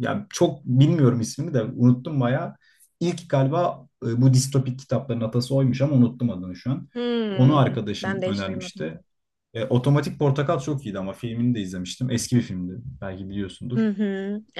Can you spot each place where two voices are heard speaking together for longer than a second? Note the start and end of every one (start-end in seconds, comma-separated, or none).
7.3-8.9